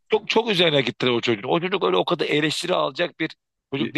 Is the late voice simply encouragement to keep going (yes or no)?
yes